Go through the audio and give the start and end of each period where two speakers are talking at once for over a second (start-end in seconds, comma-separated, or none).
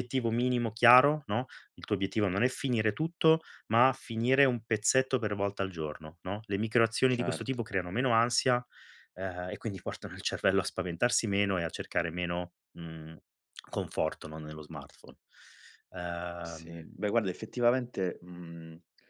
none